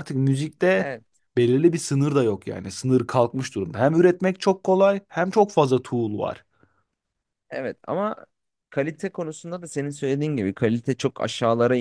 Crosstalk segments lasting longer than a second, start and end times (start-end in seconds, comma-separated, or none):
none